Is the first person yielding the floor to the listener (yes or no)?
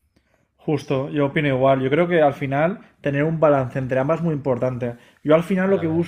no